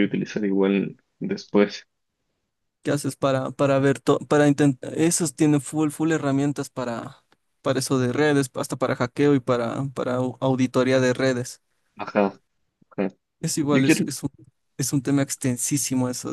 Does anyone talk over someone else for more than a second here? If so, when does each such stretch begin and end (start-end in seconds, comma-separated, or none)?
none